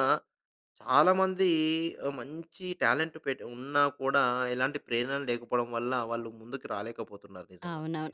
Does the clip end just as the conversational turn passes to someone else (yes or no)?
yes